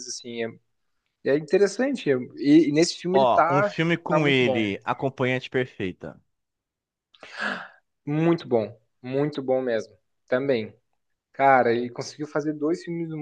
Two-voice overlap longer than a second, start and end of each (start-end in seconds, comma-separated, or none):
3.1-4.6